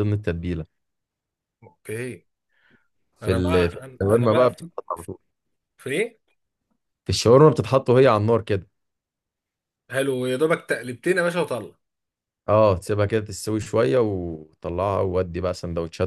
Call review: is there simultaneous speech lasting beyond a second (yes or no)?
yes